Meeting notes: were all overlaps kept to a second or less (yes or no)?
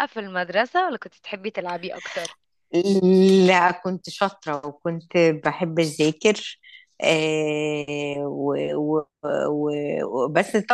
yes